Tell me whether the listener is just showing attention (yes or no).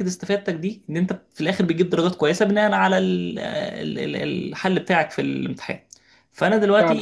yes